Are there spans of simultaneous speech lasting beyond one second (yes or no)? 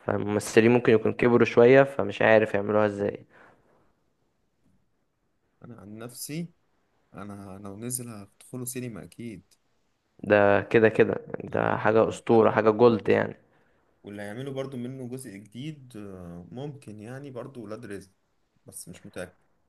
yes